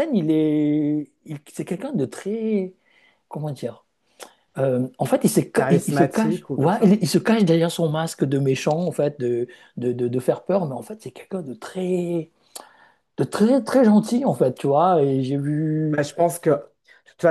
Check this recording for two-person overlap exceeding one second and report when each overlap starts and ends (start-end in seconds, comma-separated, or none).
5.5-7.0